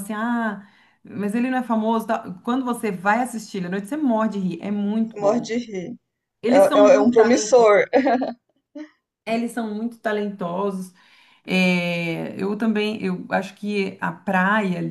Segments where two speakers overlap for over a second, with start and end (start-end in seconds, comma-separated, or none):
6.5-7.7